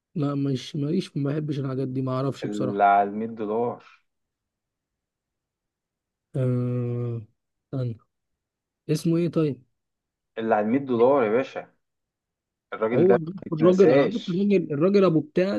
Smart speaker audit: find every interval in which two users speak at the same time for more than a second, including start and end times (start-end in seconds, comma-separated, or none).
12.9-14.5